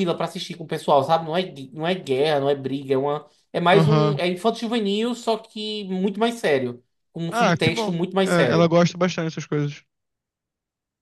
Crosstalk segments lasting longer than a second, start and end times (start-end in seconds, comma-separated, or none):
7.3-8.7